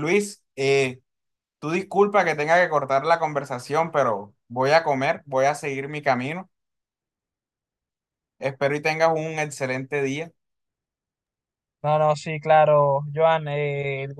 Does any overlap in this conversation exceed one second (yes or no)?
no